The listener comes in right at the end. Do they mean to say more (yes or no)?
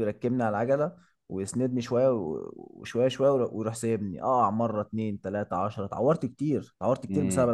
yes